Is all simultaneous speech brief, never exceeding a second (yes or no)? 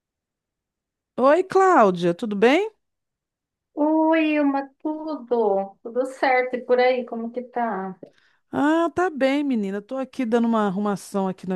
yes